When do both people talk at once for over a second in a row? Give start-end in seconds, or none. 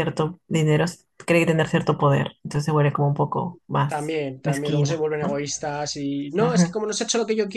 3.9-5.4